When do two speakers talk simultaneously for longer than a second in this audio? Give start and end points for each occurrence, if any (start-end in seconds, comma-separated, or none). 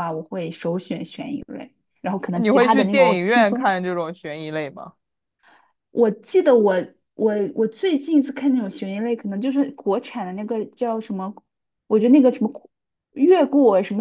2.3-3.7